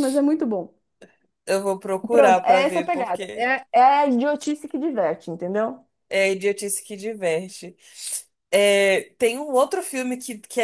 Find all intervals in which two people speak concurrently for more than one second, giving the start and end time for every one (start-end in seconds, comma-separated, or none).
2.1-3.5